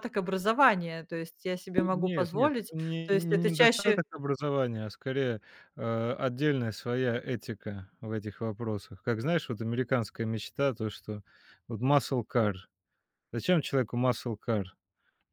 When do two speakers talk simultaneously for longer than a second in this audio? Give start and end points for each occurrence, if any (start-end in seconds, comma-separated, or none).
1.8-4.0